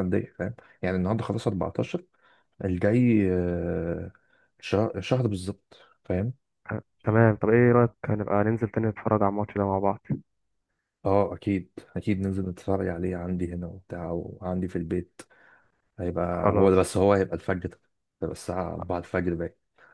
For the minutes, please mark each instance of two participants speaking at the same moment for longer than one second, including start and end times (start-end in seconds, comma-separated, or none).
none